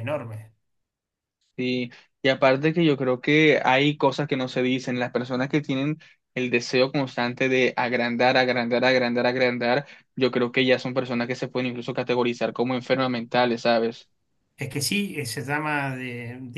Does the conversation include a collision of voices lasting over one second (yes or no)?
no